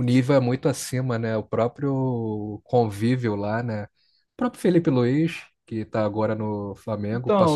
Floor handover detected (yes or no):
yes